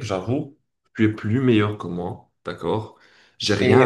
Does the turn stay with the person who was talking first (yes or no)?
no